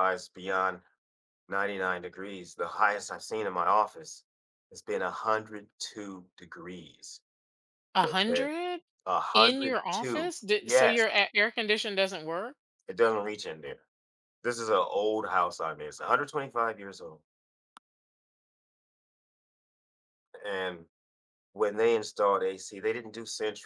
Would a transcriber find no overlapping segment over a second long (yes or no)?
no